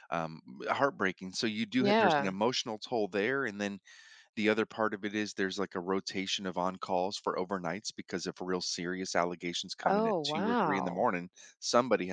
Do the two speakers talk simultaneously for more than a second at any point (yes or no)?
yes